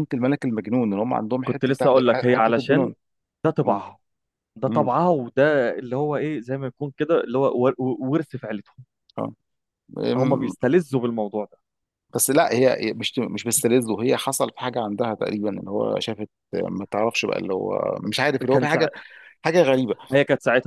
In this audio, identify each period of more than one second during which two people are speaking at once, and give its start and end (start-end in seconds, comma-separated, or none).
1.5-2.9